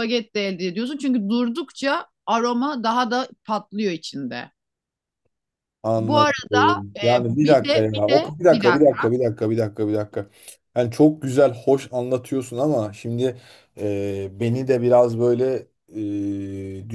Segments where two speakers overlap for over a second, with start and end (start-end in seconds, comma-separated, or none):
7.0-9.1